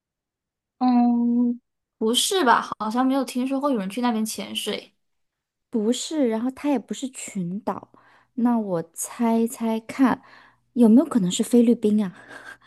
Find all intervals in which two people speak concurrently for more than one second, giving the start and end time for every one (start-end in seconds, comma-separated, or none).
none